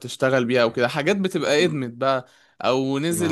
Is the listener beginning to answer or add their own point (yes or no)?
no